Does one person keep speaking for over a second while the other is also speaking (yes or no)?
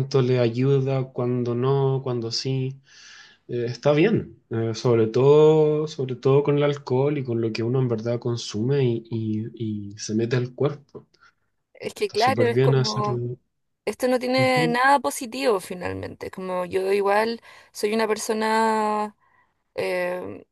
yes